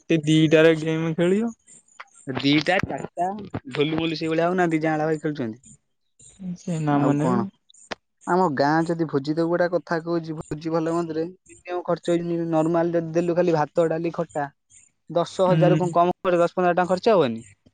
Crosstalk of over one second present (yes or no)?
no